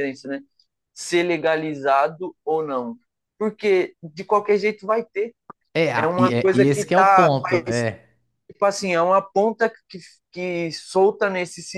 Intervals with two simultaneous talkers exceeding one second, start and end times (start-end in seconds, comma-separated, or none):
6.0-7.9